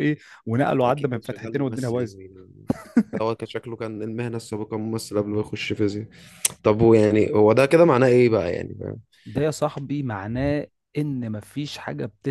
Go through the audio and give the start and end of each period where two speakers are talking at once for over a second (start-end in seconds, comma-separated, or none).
0.8-2.3